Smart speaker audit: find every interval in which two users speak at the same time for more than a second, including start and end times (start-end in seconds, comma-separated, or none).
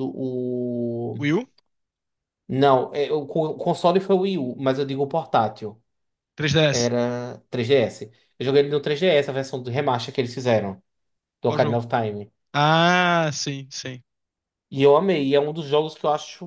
none